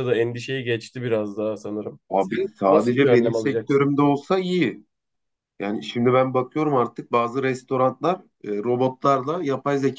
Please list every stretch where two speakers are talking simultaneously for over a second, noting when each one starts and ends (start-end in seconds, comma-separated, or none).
2.1-3.9